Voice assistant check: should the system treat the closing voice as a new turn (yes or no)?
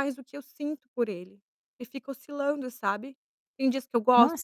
yes